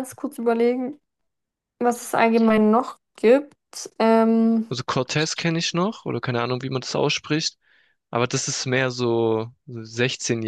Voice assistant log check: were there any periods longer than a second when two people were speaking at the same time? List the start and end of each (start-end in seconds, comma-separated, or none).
none